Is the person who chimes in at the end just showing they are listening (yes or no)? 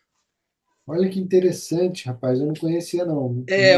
no